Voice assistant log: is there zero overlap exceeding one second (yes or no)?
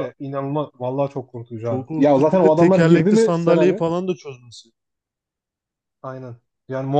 no